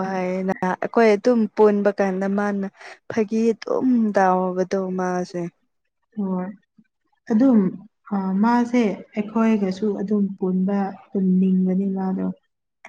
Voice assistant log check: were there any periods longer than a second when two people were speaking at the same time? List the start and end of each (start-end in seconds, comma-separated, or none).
none